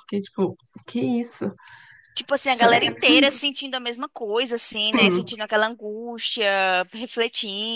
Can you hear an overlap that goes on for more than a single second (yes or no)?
no